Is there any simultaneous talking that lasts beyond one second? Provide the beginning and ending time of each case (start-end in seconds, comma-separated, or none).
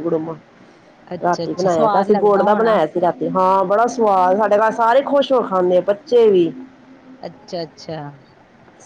1.1-2.8